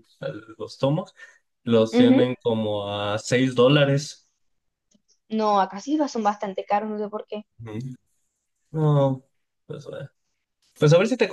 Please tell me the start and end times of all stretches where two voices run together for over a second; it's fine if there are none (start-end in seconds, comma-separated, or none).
none